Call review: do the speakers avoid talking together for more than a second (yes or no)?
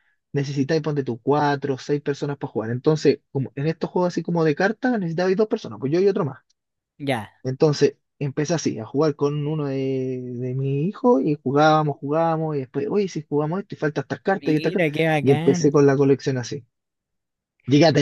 no